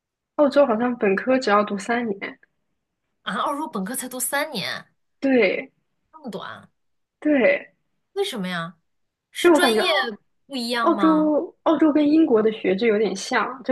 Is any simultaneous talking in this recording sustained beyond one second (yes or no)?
no